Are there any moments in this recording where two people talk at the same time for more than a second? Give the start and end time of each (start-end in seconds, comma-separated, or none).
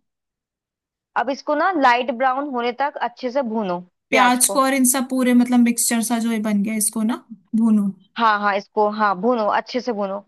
none